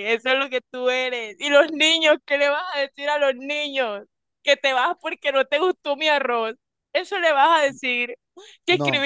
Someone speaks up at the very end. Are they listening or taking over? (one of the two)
listening